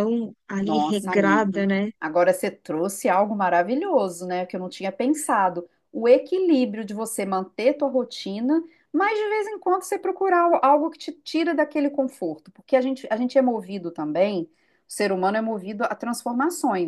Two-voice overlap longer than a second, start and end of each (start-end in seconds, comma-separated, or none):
0.6-1.9